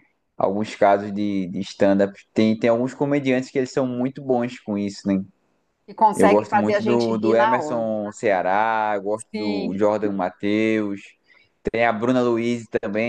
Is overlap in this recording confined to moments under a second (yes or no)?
no